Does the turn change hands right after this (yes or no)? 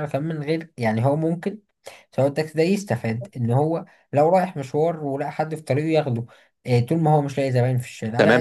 yes